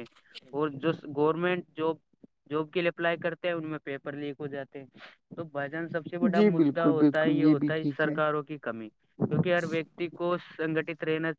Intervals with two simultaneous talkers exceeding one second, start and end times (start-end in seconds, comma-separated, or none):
6.3-8.1